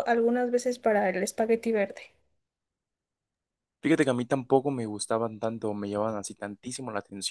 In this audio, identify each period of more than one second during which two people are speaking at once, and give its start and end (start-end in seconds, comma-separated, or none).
none